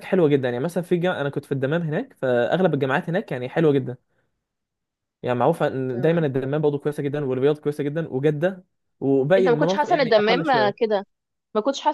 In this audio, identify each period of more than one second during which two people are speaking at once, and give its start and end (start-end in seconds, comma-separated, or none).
9.4-10.9